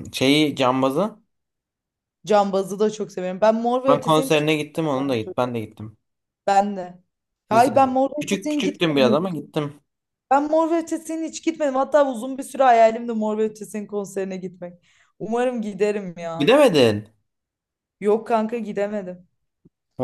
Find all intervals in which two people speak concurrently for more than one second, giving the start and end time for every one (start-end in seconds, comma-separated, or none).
7.5-9.2